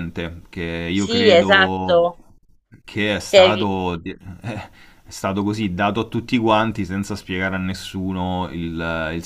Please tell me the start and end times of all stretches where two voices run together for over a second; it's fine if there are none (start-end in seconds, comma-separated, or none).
0.9-2.1